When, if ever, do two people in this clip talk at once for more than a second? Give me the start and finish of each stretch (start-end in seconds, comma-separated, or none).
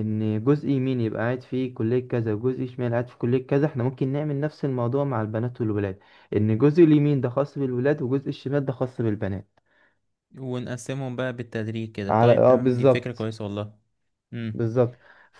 12.1-13.3